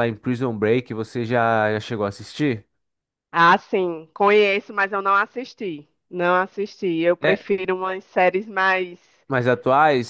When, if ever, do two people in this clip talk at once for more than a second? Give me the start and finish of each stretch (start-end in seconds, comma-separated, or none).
none